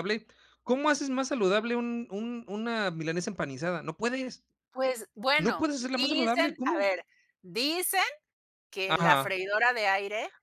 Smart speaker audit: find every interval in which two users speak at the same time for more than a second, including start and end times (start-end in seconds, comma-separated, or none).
5.4-6.9